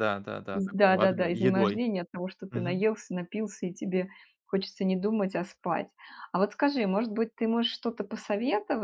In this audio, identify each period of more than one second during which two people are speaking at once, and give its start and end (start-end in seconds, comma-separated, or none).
0.5-1.8